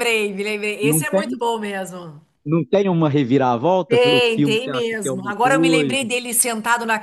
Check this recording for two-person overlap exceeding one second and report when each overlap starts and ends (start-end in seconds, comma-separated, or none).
3.9-6.1